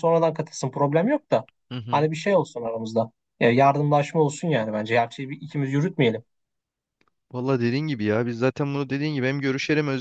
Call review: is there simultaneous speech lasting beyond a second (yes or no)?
no